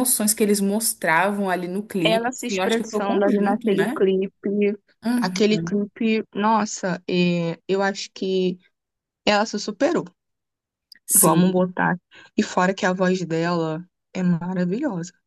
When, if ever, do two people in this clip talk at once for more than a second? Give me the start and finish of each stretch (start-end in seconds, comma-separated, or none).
2.0-4.0